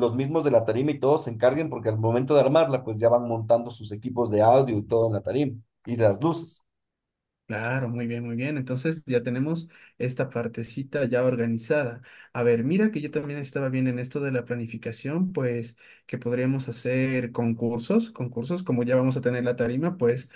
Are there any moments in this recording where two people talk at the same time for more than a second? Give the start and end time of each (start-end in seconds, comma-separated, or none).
none